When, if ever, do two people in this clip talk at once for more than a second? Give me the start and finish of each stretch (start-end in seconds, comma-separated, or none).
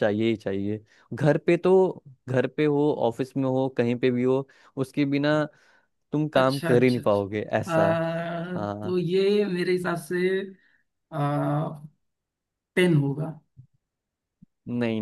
6.3-7.9